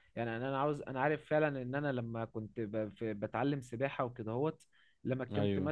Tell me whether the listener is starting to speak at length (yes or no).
no